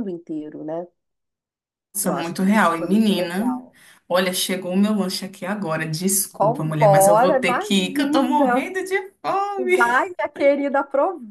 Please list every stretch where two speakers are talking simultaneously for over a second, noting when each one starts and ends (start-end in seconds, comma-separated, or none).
2.0-3.5, 6.3-8.7